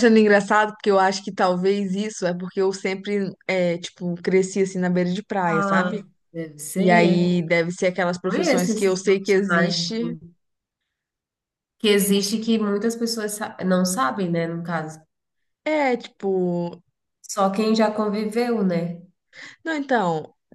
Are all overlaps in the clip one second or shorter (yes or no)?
no